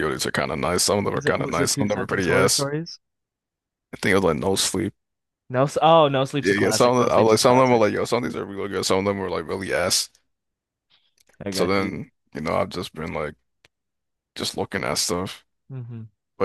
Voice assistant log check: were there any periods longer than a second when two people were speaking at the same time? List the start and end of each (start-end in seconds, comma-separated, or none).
1.1-2.7, 6.4-7.8